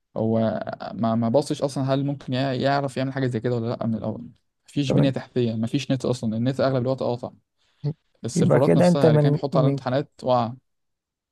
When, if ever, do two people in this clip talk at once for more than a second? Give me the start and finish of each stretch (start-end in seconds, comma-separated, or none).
8.3-9.8